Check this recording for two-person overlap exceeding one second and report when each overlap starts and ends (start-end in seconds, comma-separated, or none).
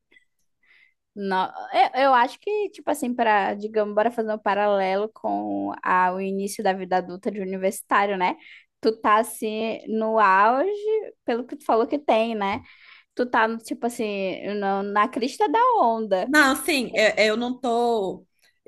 none